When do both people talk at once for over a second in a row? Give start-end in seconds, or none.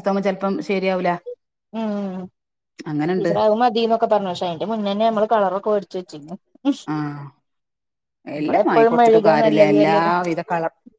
8.4-10.0